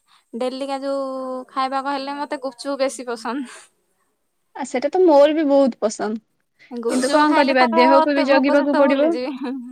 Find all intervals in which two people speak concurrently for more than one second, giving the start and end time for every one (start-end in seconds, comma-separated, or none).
6.9-9.0